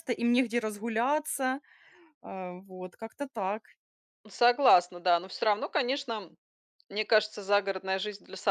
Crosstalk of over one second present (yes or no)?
no